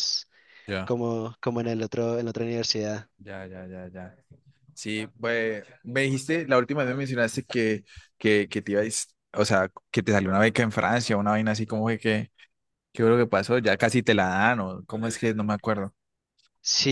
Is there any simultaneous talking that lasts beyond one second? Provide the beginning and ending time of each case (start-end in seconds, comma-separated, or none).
none